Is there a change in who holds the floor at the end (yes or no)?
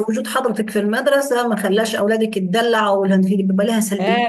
yes